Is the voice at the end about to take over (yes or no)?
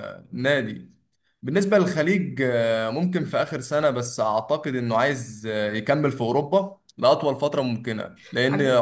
no